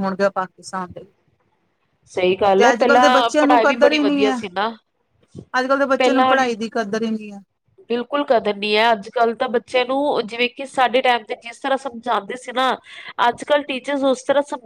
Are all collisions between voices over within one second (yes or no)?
no